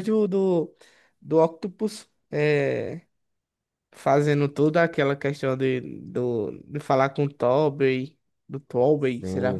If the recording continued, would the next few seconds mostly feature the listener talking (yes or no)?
yes